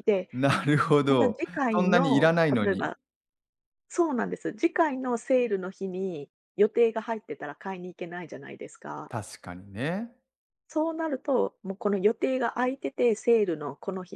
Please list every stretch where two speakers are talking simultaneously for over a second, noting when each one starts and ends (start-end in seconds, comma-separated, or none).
1.1-2.9